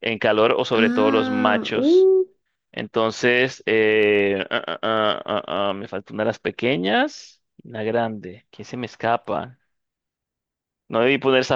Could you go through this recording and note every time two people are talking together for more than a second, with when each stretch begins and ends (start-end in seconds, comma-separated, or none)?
0.7-2.1